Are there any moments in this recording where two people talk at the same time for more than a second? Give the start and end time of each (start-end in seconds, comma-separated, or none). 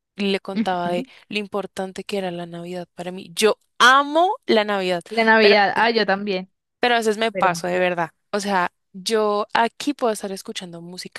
none